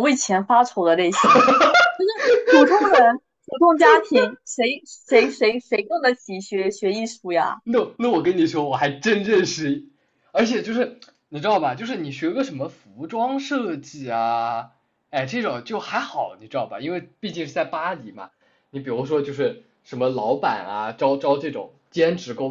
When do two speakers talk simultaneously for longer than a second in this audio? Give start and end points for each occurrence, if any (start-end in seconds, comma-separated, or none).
none